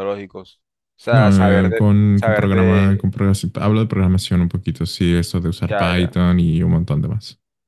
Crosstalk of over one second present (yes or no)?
yes